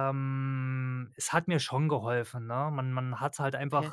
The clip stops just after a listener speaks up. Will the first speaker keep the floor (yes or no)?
yes